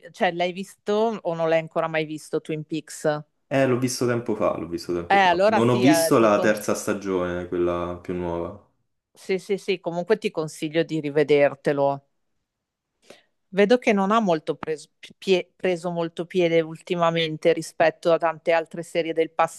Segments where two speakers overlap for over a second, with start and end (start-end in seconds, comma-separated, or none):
5.1-6.5